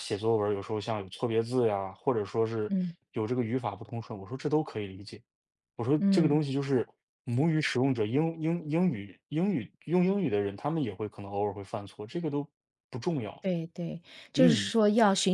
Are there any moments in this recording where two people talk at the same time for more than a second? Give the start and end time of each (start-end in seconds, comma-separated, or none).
none